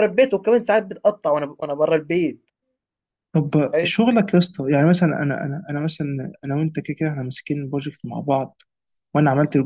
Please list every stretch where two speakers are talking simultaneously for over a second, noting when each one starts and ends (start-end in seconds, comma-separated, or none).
none